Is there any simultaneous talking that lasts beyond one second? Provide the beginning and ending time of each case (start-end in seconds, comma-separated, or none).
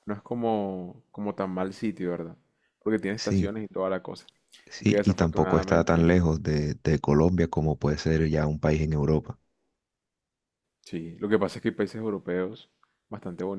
4.8-6.1